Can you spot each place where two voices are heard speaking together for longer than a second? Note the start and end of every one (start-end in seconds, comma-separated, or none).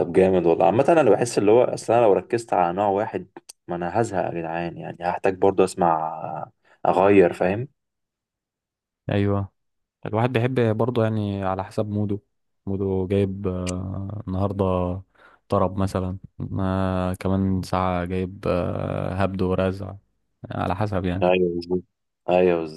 none